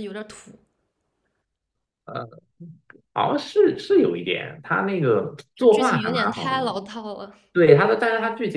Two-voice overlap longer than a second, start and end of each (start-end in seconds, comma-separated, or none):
5.5-6.7